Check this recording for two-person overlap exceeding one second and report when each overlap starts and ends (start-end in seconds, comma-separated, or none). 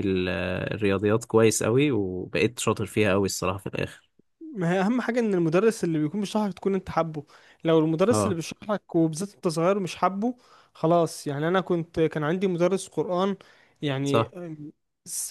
none